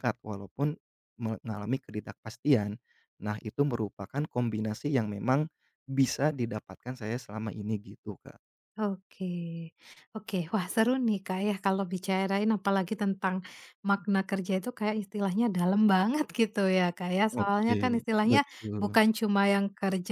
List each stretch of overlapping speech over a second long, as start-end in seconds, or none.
17.4-19.0